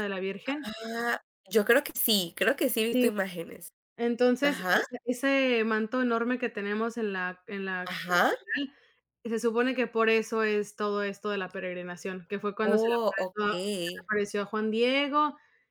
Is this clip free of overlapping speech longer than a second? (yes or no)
no